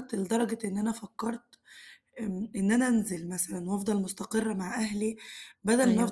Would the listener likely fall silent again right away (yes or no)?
yes